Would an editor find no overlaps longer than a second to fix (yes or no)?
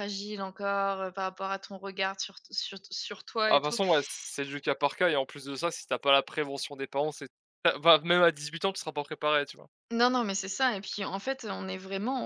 yes